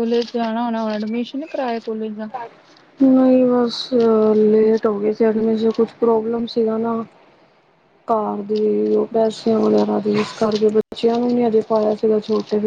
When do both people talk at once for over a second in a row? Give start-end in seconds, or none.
none